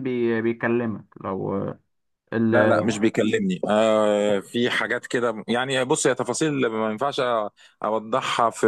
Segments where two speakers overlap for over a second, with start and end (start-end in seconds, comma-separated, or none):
none